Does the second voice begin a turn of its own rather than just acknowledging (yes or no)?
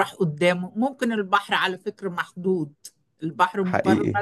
no